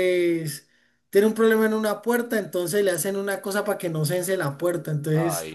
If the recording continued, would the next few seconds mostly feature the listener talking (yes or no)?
no